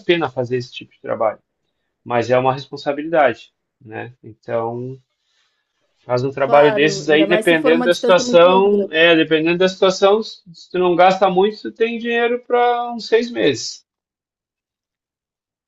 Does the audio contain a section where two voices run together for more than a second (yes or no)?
yes